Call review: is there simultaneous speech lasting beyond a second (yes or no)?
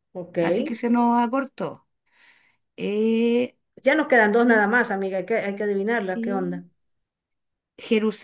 no